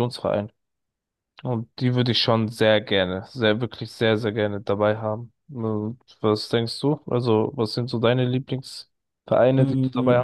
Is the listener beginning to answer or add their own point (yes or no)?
yes